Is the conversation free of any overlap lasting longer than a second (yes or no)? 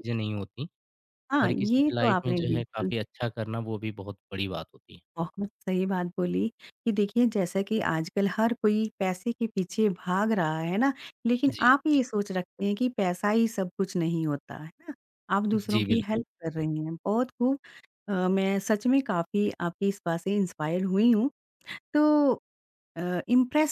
no